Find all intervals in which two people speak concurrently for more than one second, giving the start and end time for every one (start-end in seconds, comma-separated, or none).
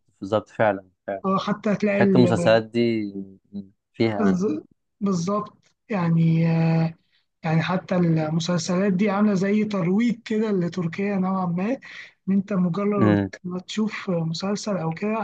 none